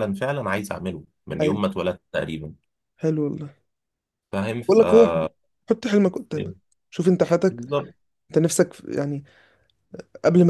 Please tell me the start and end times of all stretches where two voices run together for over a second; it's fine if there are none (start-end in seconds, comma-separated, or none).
none